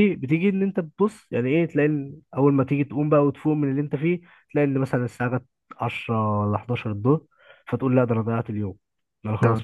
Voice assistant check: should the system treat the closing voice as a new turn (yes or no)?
no